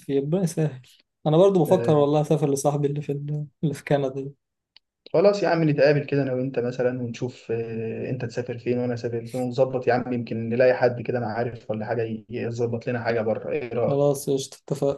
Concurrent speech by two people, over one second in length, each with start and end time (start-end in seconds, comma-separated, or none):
none